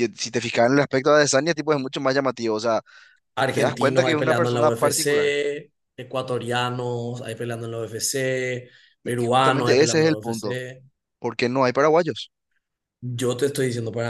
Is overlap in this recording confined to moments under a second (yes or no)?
no